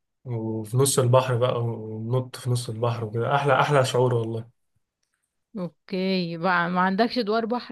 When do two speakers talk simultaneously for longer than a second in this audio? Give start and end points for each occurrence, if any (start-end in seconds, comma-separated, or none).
none